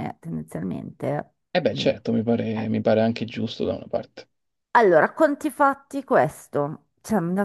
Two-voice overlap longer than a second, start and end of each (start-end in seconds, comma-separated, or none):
none